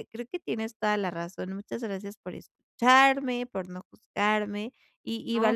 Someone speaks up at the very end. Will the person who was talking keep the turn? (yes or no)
yes